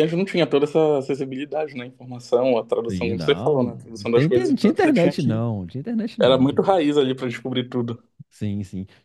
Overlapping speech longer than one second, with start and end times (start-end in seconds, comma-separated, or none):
2.9-5.4